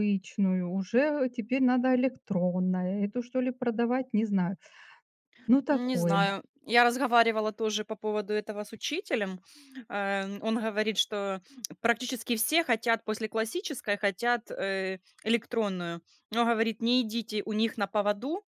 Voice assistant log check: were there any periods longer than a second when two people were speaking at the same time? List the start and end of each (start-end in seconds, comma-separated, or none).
none